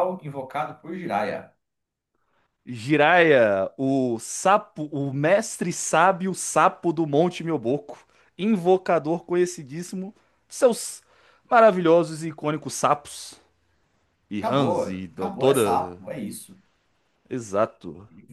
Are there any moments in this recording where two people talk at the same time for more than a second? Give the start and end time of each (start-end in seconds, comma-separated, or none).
14.4-16.0